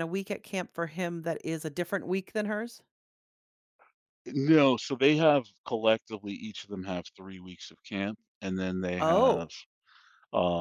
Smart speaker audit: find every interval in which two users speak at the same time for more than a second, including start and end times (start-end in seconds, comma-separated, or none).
none